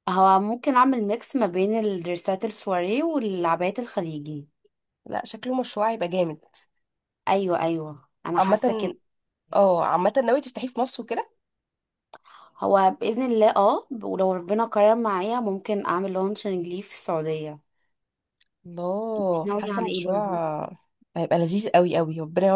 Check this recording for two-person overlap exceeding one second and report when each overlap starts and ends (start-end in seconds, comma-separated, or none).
19.2-20.4